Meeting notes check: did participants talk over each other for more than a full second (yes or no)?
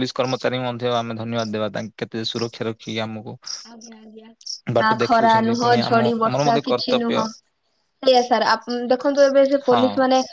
yes